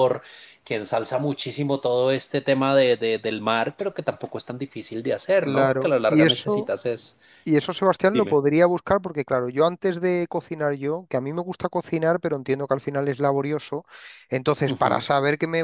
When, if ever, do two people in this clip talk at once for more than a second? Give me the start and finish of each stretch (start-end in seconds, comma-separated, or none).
5.4-6.7